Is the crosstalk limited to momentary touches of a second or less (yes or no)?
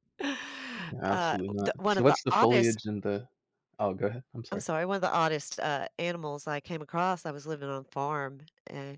no